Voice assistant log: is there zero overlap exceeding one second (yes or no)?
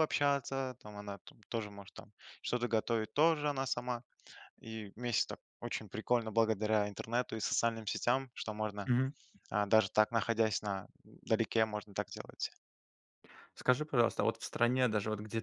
yes